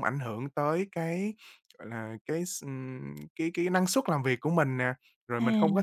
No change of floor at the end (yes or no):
yes